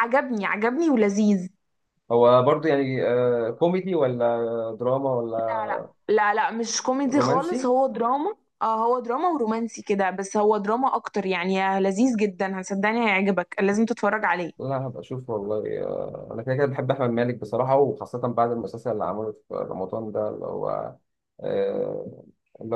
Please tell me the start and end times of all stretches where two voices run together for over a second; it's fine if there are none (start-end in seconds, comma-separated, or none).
none